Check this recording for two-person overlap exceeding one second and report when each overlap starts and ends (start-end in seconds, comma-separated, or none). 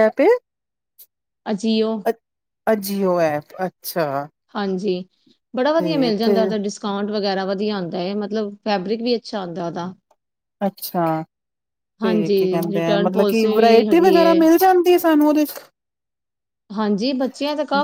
12.0-14.4